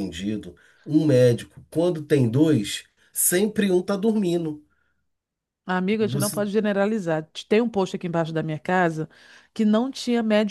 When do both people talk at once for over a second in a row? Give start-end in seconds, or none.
none